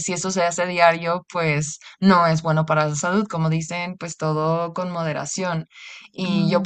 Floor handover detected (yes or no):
no